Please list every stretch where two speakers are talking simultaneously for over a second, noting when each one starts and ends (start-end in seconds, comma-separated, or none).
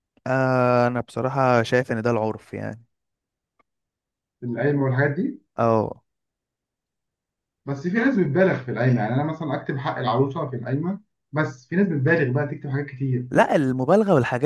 none